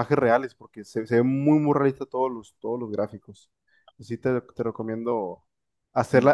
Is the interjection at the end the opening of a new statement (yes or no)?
no